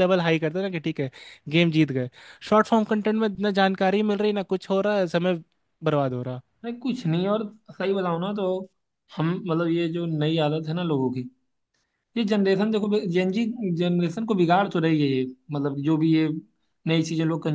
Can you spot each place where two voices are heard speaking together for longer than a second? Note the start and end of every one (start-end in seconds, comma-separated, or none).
none